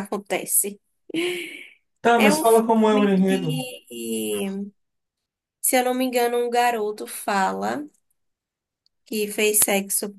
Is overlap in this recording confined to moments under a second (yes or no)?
no